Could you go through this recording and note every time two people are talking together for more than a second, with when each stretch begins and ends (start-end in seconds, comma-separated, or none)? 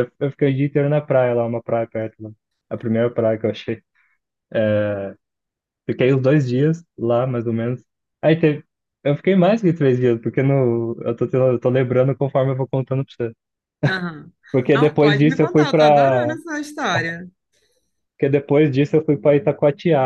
14.7-16.4